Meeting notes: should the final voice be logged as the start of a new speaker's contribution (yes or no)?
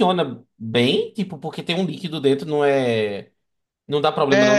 yes